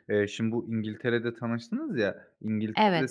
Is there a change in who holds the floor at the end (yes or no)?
no